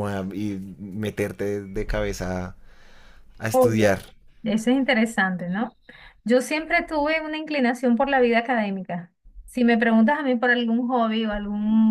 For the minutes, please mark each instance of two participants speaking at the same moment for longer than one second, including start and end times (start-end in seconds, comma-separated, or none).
none